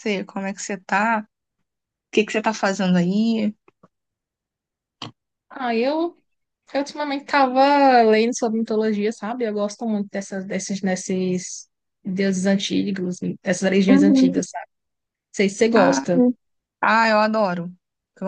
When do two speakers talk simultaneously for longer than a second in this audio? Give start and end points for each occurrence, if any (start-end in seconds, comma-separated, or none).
none